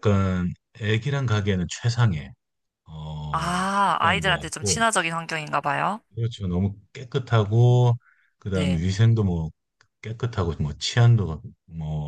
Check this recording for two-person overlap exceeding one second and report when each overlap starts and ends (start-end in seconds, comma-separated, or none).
3.3-4.8